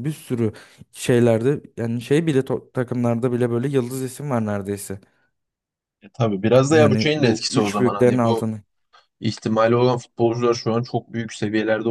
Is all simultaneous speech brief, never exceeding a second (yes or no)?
no